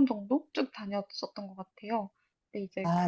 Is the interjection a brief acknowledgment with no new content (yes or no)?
yes